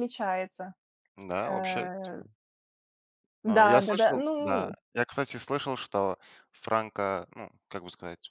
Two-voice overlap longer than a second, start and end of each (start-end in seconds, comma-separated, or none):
3.5-4.8